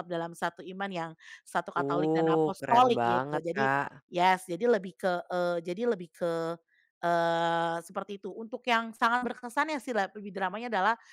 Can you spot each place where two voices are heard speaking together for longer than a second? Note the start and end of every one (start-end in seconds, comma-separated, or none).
1.8-3.7